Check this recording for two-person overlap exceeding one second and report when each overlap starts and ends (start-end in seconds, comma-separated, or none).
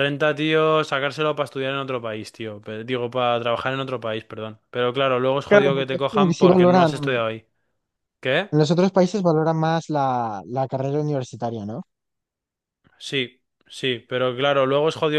5.5-6.9